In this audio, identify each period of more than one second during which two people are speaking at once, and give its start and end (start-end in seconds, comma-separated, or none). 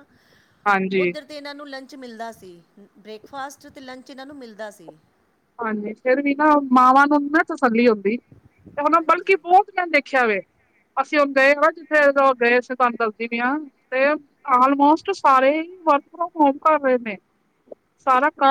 none